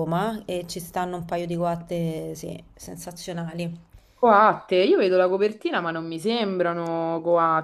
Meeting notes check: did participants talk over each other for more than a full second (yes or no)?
no